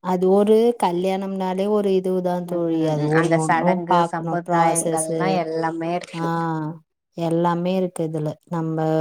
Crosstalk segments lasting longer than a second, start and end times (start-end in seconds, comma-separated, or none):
2.5-5.2